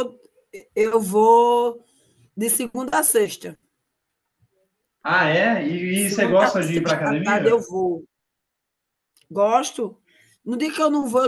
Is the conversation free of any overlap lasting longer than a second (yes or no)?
no